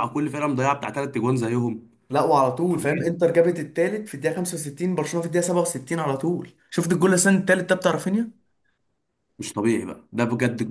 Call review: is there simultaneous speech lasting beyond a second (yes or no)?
no